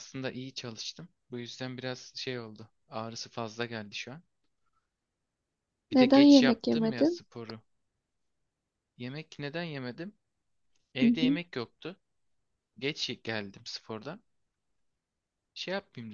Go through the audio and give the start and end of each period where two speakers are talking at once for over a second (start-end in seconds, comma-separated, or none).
5.9-7.2